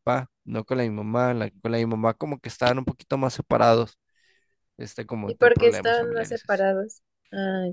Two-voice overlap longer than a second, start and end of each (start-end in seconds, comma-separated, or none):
5.3-6.6